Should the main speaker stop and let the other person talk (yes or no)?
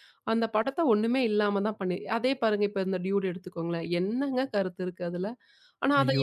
no